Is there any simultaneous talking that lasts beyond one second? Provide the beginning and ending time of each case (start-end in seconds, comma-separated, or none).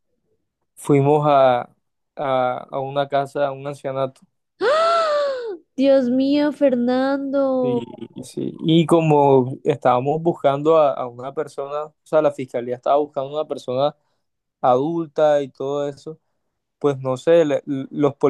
none